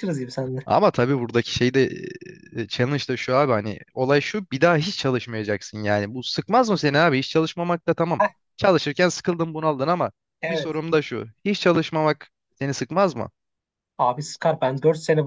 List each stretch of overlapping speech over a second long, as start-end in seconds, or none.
none